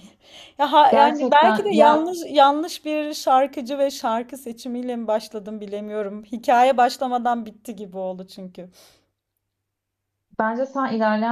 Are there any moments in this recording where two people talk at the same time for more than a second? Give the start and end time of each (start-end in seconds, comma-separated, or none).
0.9-2.1